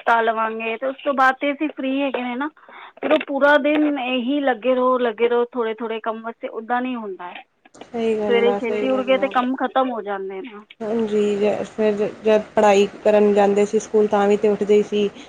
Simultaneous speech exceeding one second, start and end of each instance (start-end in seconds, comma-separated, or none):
7.9-9.3